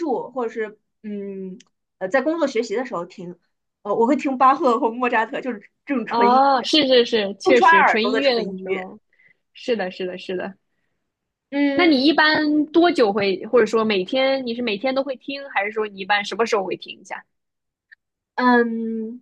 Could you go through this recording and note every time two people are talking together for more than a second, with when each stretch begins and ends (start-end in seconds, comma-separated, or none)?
7.4-8.9